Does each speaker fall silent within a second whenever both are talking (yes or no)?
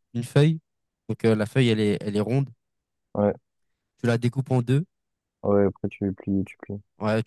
yes